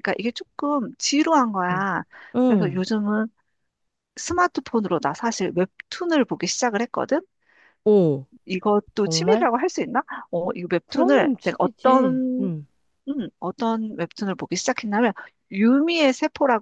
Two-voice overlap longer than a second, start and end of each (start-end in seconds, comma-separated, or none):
10.8-12.5